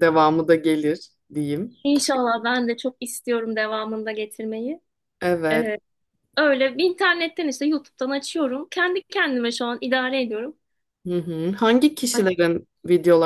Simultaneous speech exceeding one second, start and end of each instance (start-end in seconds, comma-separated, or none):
none